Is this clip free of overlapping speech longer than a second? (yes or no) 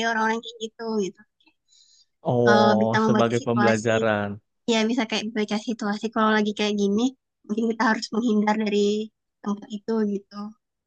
no